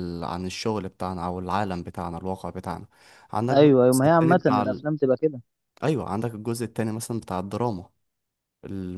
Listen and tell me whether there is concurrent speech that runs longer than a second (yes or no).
yes